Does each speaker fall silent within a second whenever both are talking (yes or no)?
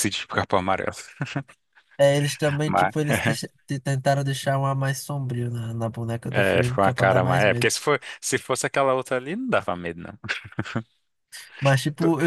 no